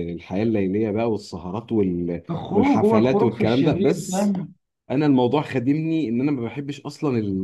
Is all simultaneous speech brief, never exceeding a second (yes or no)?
no